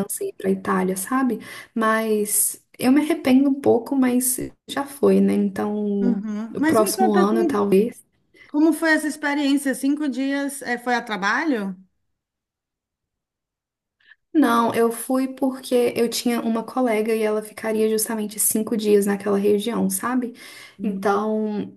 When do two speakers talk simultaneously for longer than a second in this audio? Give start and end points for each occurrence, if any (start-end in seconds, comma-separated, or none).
6.0-7.7